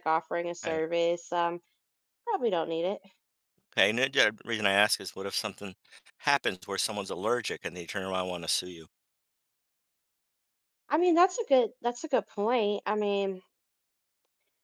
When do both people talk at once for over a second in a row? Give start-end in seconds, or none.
none